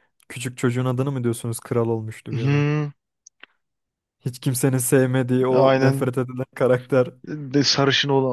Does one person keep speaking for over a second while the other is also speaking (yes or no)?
no